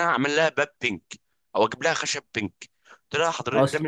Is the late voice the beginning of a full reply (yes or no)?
no